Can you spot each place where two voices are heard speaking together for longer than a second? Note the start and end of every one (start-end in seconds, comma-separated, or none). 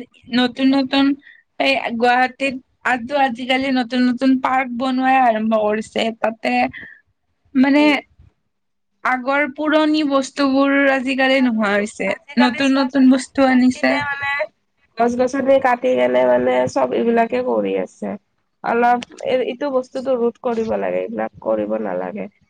11.4-13.9